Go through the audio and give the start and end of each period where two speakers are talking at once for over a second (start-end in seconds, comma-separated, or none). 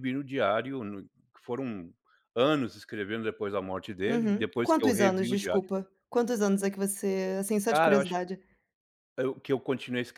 4.1-5.7